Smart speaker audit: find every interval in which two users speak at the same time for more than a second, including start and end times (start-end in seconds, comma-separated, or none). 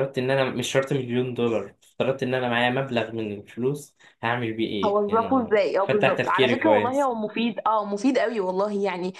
4.8-7.1